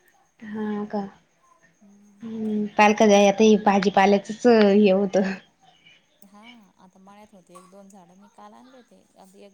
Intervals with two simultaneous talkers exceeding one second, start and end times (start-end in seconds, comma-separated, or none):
none